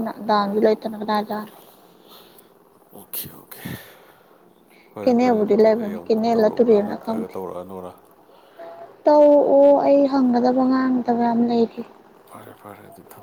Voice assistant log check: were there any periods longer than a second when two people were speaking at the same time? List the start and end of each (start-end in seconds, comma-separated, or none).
5.0-7.3